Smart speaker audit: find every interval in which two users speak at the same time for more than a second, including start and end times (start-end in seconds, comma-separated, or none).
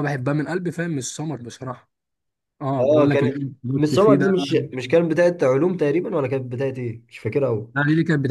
2.8-4.3